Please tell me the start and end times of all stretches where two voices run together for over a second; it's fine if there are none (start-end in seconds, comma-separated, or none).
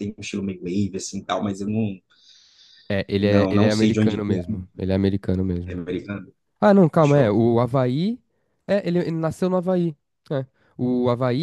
3.2-4.6